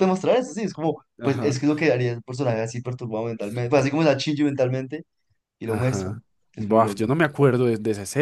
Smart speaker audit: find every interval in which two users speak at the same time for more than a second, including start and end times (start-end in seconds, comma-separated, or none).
5.7-7.1